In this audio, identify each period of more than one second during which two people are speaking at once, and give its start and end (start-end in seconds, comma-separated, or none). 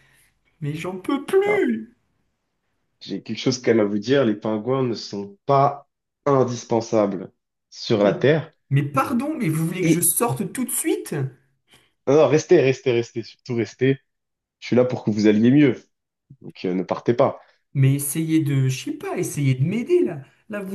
none